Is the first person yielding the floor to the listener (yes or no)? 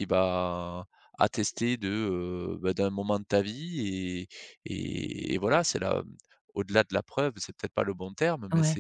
no